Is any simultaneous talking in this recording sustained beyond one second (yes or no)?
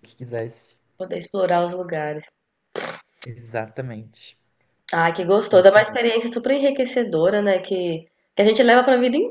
no